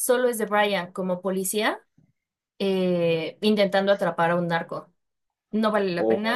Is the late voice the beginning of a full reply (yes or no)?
no